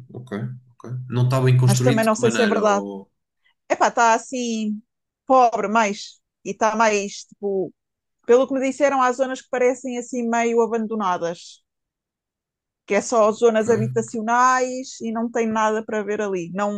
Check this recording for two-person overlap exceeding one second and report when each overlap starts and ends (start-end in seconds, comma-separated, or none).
1.6-2.8